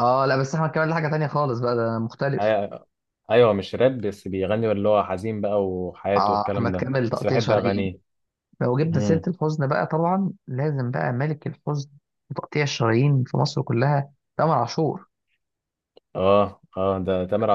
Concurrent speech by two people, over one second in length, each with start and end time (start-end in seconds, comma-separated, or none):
6.2-7.9